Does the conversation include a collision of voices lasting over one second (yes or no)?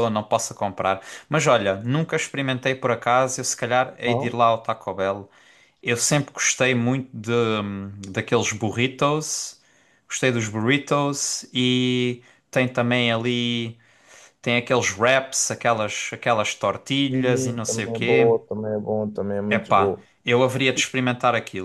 yes